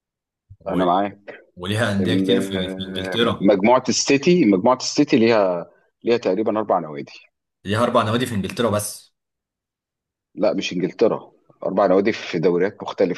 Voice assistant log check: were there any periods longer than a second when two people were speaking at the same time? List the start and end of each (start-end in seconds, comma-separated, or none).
2.0-3.5